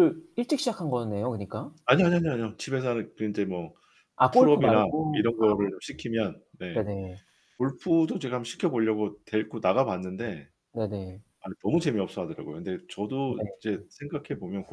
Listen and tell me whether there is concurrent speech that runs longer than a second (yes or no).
yes